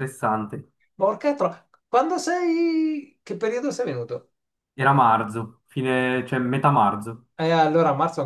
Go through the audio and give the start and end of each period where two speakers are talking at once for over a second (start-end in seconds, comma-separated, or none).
none